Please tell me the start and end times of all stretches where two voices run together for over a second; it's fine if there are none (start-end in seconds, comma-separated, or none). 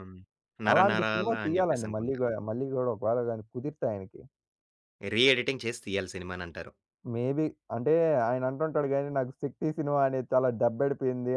0.7-2.2